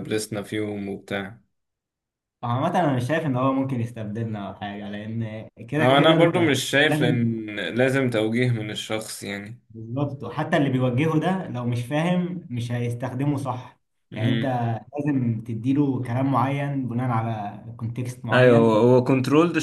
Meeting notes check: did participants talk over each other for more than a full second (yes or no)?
yes